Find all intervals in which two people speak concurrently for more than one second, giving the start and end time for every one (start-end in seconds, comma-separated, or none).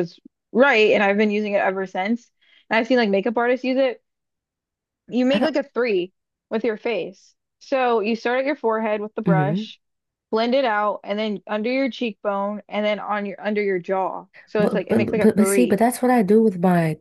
14.6-15.8